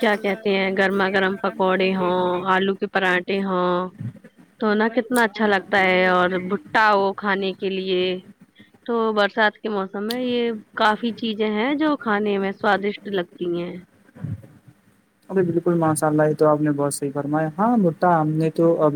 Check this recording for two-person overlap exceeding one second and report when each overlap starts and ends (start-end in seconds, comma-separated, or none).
none